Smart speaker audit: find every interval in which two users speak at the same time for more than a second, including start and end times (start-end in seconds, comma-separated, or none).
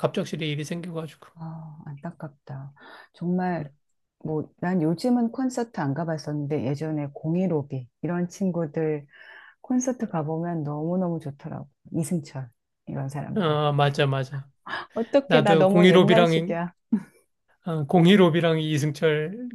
15.3-16.6